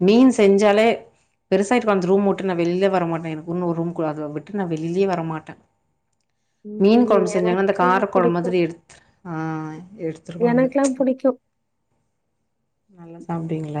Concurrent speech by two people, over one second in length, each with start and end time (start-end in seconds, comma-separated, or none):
6.8-8.6